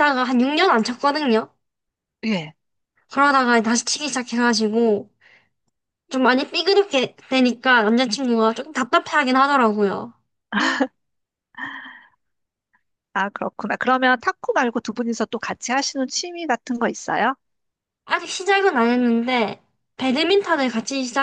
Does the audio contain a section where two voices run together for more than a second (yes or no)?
no